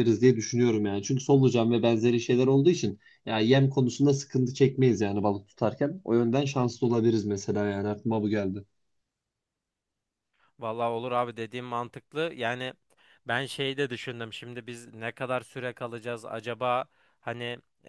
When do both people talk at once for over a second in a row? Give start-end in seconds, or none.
none